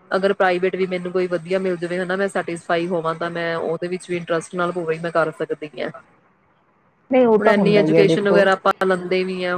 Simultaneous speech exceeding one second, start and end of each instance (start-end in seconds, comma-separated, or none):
7.4-8.8